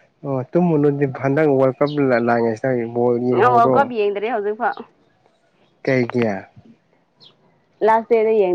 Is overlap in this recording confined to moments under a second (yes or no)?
yes